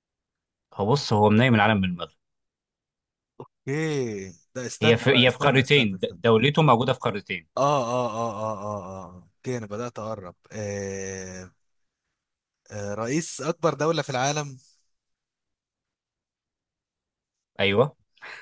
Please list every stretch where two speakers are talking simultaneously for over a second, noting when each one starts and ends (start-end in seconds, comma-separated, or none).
4.8-6.2